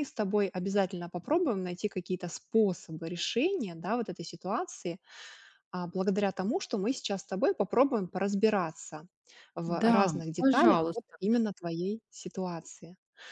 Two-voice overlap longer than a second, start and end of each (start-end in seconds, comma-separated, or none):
9.7-11.2